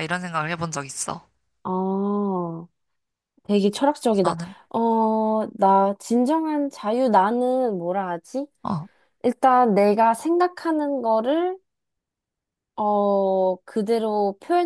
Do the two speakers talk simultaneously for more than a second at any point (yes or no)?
no